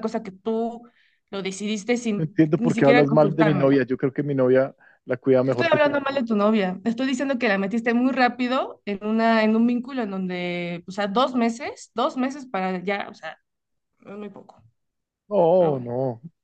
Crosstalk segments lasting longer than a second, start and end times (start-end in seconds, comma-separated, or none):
2.1-3.8